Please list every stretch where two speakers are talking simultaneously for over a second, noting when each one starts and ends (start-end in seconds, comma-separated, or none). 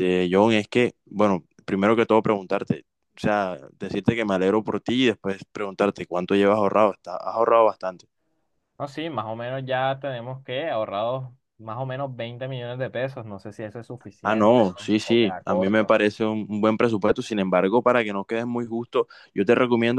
14.2-15.9